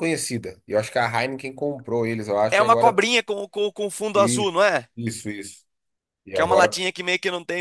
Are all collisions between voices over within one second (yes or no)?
yes